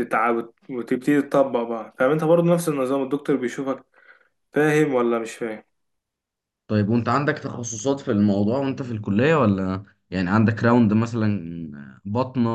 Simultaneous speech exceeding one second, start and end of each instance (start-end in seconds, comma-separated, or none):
none